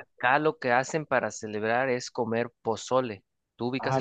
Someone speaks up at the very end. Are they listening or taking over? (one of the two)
taking over